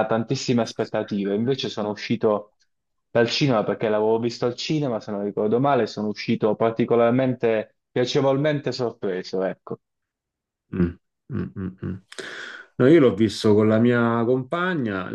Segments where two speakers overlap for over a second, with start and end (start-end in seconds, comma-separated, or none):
none